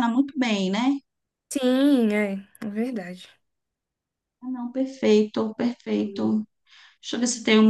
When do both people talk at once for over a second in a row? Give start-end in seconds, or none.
none